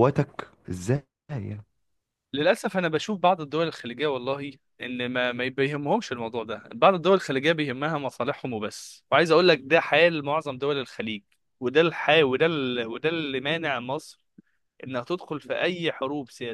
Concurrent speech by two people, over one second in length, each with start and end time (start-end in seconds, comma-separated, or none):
none